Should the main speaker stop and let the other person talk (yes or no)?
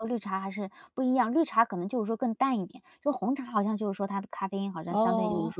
no